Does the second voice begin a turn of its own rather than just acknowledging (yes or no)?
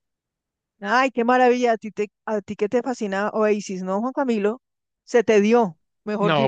yes